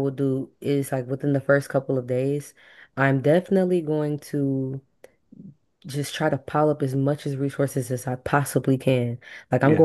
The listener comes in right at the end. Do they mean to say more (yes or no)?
no